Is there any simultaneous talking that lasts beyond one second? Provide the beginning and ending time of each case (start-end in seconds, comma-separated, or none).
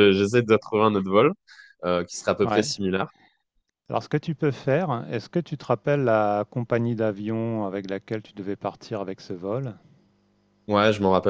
none